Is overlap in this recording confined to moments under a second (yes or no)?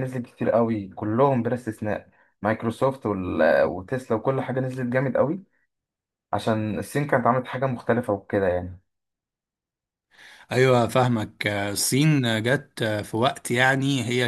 yes